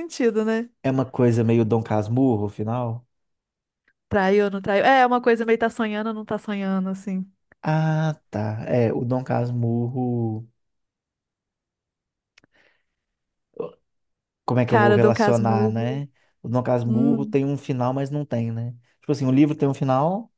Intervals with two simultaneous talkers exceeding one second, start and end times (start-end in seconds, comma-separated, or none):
14.7-16.0